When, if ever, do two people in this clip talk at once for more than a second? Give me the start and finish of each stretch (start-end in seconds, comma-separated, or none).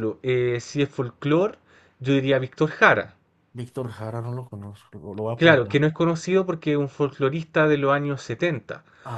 none